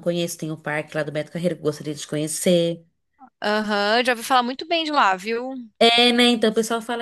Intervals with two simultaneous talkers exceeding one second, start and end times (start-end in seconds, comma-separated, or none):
none